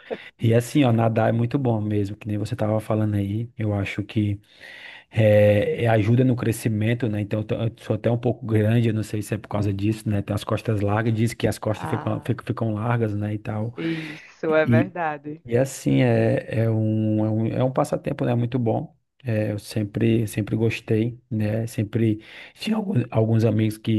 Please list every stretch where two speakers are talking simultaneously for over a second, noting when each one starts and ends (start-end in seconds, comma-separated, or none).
none